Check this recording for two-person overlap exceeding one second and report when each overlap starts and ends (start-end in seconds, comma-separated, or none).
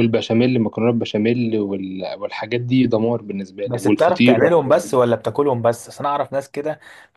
3.6-4.9